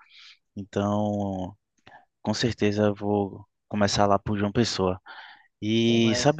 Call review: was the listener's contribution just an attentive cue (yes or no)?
yes